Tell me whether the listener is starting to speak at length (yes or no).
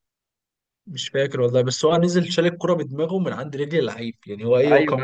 yes